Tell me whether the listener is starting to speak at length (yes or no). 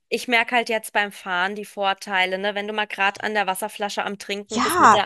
yes